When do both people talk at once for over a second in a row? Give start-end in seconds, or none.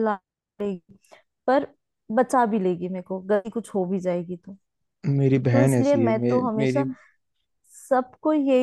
5.5-6.8